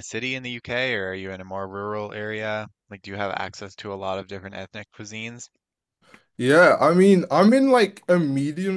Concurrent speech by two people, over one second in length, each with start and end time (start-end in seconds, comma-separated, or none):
none